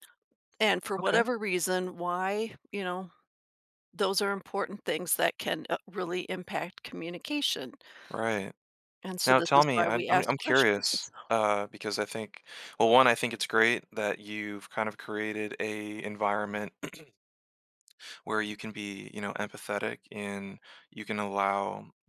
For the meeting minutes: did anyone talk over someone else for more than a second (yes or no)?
yes